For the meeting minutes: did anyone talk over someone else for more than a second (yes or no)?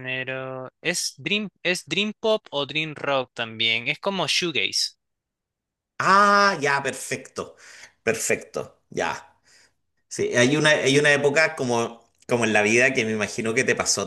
no